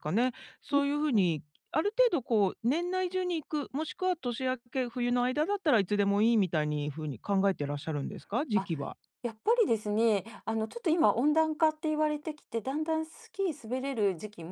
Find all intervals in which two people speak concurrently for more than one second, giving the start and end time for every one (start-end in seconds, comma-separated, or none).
none